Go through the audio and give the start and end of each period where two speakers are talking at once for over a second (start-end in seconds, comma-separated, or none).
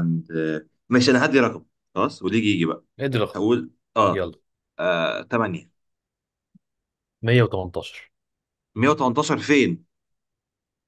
none